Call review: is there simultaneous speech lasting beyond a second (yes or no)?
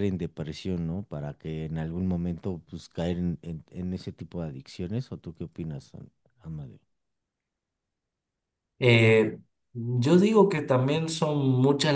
no